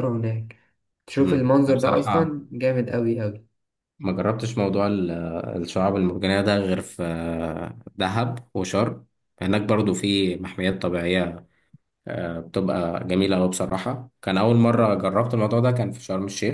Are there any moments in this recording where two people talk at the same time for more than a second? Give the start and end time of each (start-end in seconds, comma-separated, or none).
1.2-2.4